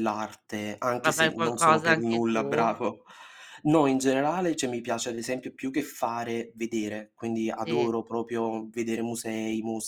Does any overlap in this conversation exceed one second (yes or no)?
yes